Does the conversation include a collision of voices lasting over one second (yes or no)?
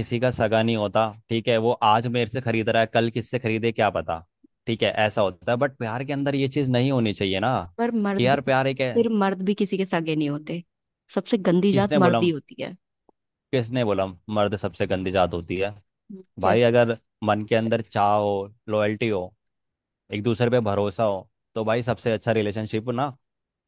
no